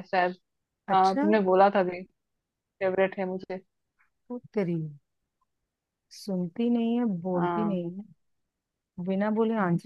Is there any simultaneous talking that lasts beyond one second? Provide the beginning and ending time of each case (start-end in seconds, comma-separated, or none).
none